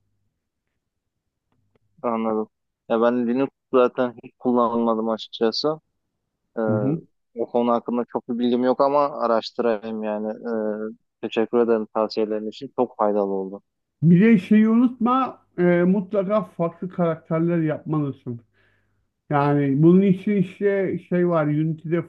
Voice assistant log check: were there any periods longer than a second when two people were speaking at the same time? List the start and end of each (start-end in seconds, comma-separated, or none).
none